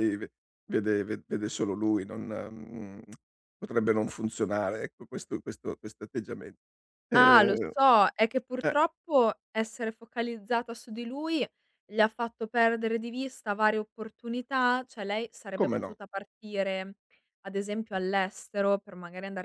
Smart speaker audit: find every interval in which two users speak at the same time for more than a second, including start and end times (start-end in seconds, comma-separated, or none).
none